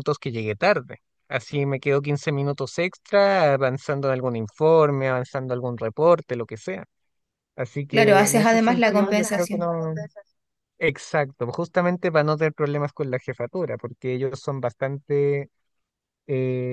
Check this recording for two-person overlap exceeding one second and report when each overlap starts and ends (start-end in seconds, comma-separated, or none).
7.9-9.7